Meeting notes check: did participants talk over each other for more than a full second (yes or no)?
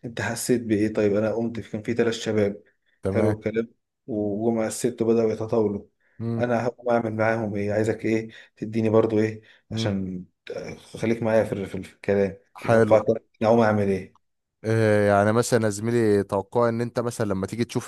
no